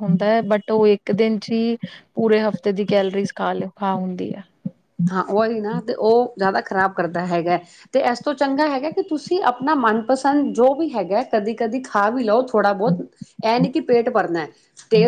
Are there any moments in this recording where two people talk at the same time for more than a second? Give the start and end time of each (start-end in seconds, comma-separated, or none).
none